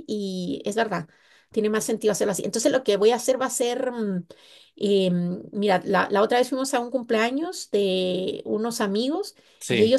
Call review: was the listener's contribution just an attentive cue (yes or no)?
yes